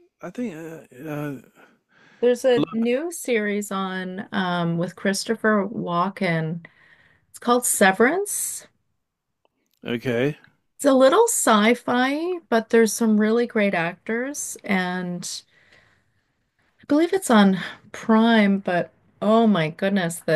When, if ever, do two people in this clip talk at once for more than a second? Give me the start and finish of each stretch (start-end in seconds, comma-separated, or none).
none